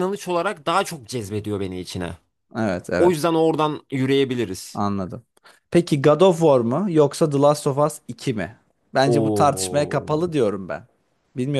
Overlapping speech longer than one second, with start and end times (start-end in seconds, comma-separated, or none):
9.1-10.3